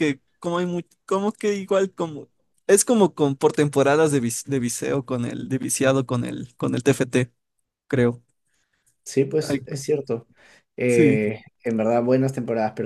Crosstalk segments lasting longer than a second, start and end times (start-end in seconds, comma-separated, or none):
none